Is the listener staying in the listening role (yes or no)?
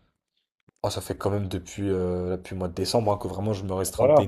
no